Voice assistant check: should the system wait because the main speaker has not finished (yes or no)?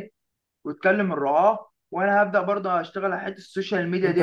no